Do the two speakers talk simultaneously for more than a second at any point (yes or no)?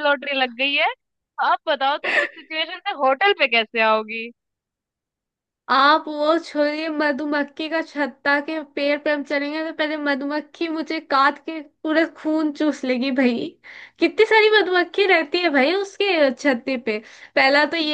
no